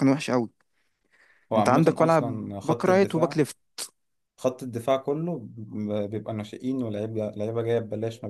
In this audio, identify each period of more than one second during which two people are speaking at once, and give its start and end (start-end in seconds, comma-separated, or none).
1.6-3.4